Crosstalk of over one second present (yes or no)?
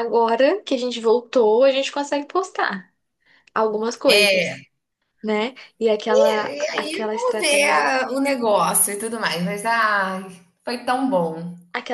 yes